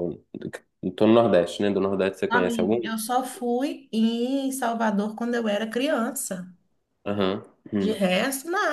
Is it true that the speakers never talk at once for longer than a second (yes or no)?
yes